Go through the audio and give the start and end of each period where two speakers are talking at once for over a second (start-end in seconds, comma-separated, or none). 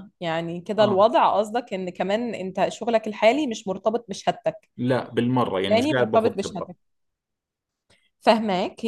5.4-6.7